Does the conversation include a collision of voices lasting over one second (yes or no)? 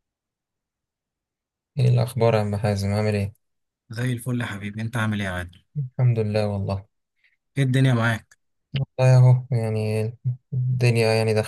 no